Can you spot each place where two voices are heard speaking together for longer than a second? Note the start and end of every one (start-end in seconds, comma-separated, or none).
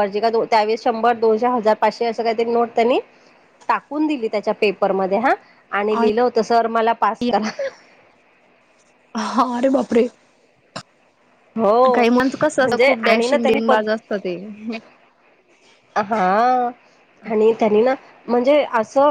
11.9-13.7